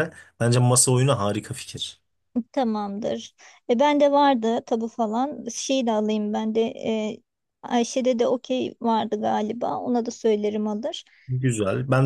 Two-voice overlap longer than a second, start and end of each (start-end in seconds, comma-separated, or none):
none